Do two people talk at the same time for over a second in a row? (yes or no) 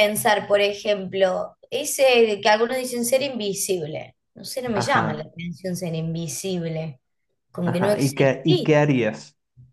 yes